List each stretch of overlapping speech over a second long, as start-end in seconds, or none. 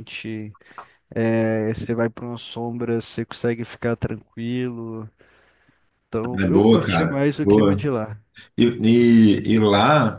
6.4-7.9